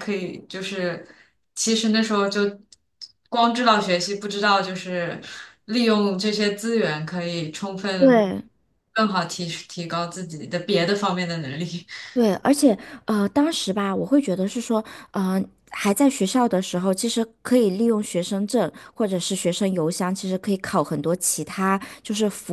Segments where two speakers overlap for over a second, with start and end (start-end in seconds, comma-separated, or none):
none